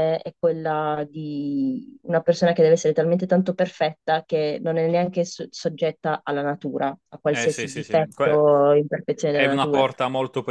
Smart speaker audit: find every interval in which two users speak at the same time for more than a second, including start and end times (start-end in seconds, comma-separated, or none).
7.3-8.5